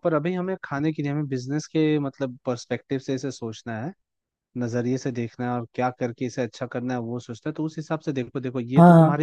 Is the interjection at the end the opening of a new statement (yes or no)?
no